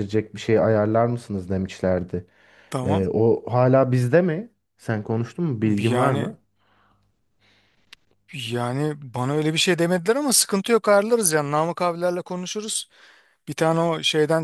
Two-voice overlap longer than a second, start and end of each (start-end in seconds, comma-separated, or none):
none